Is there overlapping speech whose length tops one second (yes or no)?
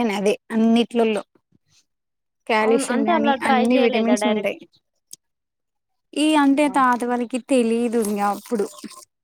yes